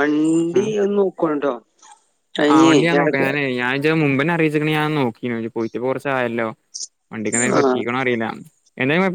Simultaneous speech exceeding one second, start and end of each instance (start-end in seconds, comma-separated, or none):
none